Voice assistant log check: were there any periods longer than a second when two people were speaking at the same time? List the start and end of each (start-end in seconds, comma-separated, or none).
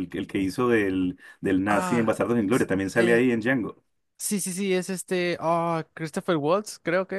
1.7-3.2